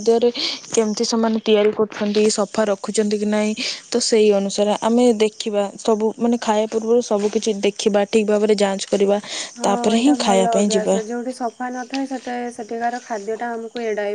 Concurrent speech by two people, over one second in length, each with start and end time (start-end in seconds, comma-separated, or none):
none